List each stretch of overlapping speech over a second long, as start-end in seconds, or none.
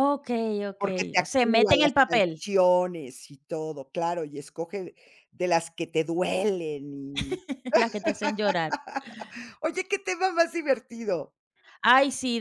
0.8-2.5